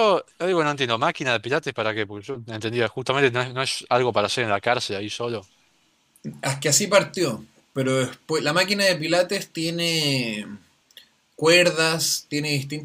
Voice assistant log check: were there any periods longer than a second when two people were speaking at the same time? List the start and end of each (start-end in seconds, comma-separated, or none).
none